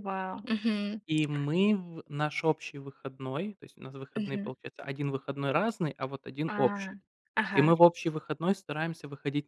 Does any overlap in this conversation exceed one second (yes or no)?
no